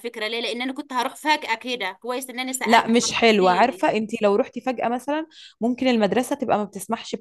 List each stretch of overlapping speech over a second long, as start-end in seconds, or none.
2.6-3.9